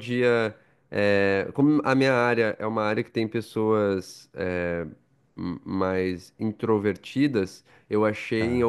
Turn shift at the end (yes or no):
no